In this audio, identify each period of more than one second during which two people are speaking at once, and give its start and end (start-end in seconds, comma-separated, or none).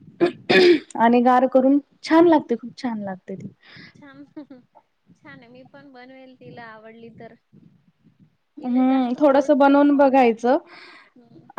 8.6-10.3